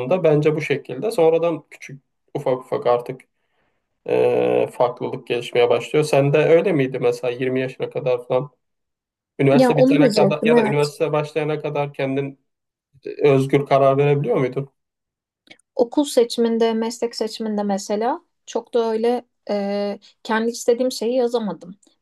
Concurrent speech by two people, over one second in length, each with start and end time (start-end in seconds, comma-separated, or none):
9.5-10.9